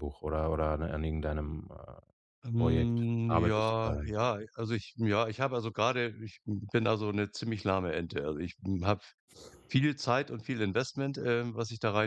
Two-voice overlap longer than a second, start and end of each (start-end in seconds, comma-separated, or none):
2.5-4.2